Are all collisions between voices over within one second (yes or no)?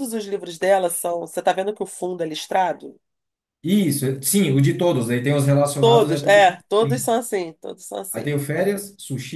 no